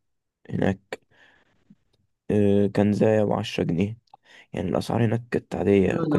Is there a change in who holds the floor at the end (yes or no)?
yes